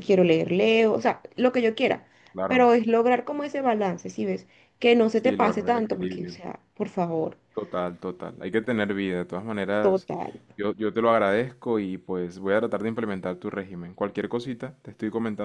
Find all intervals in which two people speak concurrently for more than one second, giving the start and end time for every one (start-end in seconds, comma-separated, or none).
5.1-6.3